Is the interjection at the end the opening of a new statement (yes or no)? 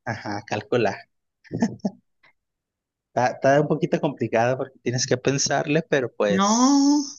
yes